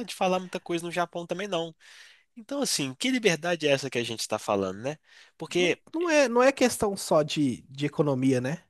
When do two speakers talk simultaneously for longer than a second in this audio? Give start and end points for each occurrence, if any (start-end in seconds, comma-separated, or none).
none